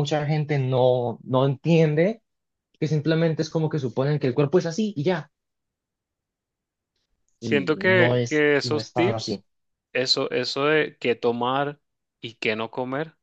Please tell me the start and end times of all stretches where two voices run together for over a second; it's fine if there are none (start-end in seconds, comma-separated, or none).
7.4-9.4